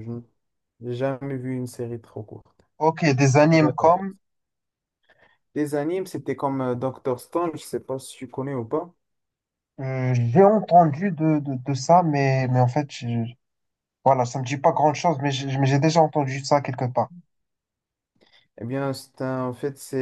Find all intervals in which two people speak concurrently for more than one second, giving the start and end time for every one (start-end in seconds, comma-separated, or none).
none